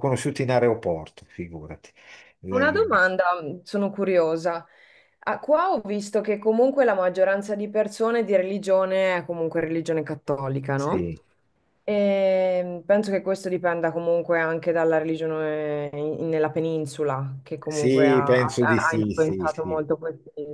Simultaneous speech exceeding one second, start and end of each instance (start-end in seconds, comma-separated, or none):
17.7-19.8